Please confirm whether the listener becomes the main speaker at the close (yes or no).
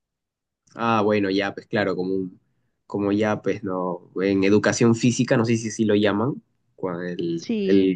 no